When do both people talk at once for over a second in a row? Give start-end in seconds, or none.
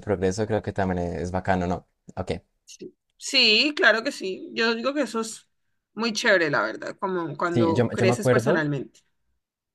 7.4-8.7